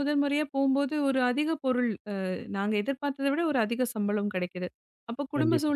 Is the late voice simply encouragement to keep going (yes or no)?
yes